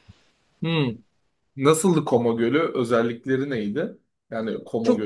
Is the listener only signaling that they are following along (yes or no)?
no